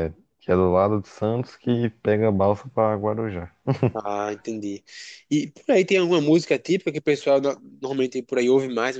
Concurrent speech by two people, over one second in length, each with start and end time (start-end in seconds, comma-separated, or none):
none